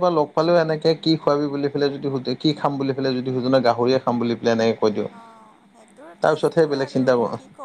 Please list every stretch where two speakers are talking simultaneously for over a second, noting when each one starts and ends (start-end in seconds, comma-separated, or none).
none